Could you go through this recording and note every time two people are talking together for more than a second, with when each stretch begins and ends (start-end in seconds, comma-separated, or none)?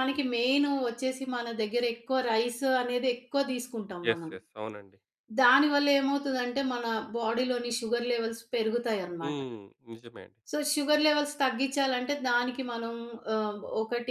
none